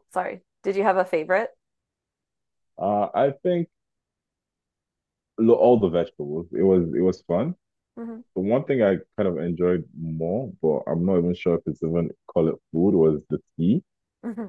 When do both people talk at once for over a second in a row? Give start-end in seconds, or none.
none